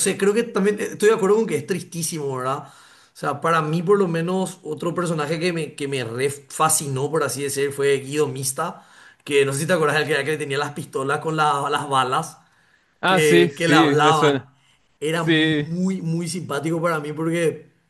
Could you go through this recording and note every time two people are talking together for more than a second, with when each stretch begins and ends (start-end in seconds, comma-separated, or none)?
13.0-14.4